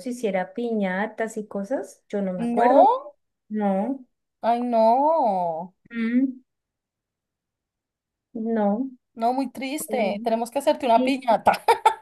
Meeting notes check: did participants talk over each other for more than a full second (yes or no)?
no